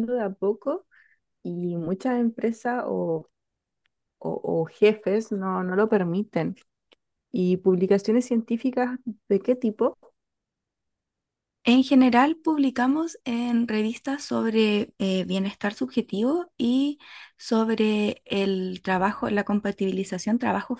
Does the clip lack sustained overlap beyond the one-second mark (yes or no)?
yes